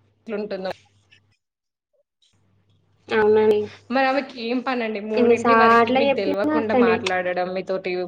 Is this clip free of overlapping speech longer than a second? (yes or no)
no